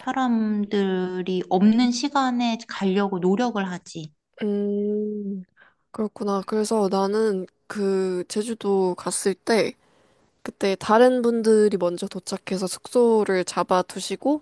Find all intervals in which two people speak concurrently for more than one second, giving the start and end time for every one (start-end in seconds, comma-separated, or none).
none